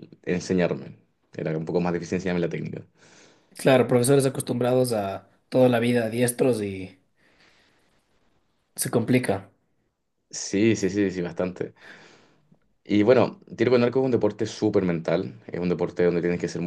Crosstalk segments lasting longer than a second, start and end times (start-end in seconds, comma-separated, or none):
none